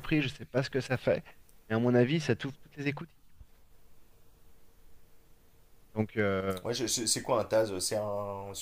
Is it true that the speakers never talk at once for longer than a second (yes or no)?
yes